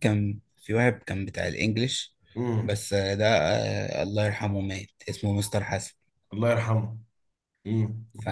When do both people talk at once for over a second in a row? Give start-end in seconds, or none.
none